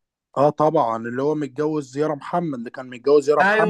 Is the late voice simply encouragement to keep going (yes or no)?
no